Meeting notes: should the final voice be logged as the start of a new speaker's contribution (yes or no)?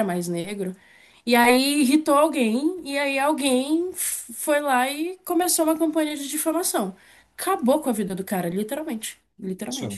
no